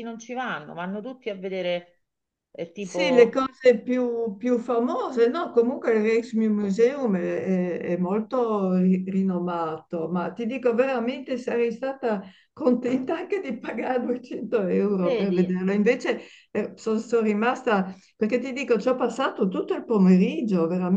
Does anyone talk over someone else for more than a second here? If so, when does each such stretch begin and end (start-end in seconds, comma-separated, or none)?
none